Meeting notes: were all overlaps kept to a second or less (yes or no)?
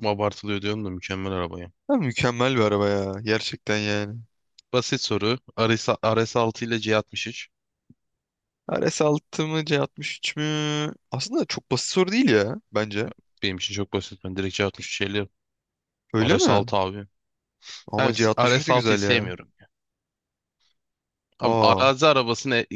no